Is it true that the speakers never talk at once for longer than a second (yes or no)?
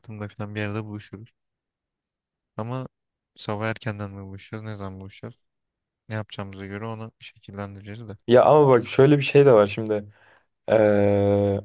yes